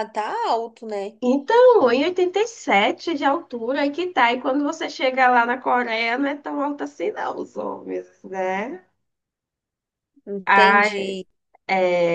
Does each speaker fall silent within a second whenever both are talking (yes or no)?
yes